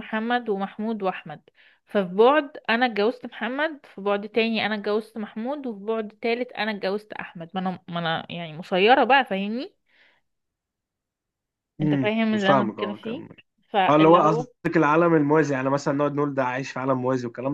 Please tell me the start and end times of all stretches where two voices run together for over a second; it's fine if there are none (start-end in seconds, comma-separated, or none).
11.8-13.2